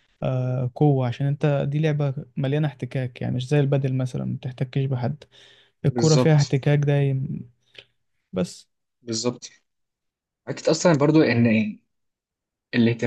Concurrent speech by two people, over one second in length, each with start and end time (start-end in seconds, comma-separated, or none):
none